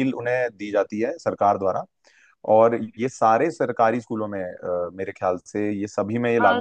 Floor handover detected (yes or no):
yes